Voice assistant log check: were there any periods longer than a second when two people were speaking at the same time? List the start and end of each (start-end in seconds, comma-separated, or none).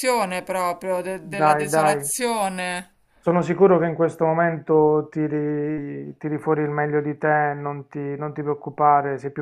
none